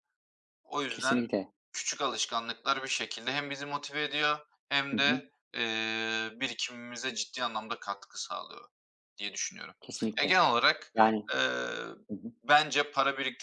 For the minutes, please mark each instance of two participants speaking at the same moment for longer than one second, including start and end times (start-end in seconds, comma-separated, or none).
none